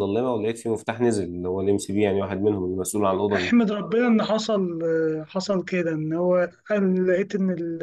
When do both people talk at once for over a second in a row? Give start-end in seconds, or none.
none